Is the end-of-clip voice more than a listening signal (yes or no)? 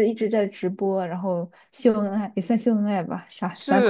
yes